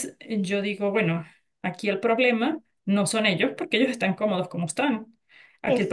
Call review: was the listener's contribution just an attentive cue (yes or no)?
yes